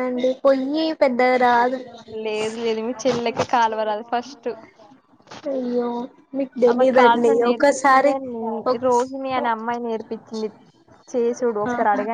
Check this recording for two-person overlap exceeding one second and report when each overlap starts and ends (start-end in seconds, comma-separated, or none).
6.7-8.1